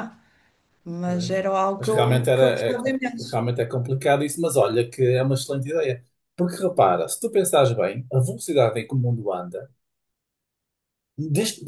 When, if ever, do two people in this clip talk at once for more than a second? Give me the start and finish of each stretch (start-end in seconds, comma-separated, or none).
1.0-3.4